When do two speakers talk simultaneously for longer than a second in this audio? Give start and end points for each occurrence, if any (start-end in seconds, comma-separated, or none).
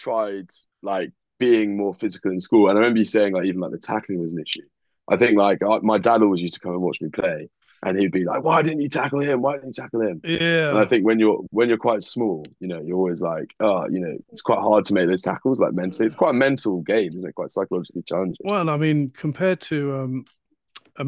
none